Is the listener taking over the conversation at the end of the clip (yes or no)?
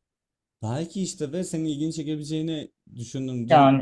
no